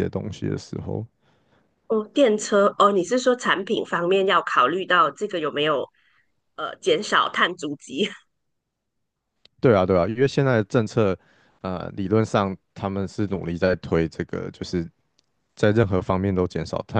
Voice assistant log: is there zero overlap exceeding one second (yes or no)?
yes